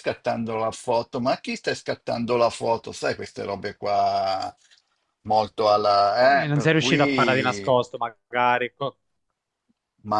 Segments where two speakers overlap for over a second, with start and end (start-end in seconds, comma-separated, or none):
6.2-7.7